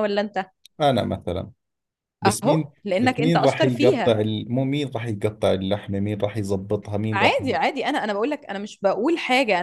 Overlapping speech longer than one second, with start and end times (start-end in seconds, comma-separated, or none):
2.3-4.2